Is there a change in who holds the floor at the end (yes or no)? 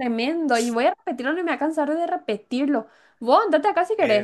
no